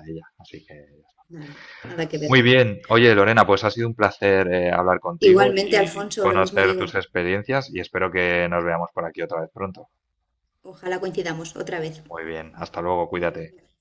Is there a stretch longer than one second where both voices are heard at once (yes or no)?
yes